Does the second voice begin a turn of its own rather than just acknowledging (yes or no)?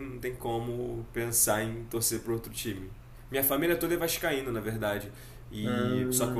no